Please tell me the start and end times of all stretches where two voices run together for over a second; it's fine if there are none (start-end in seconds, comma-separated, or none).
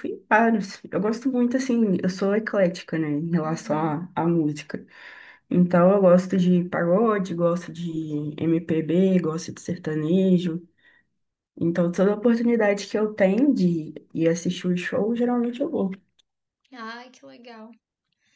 none